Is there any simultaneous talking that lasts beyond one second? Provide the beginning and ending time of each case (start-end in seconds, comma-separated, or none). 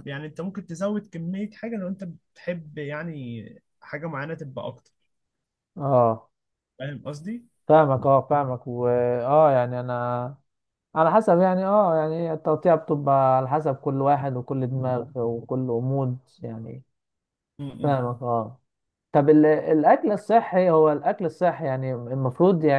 none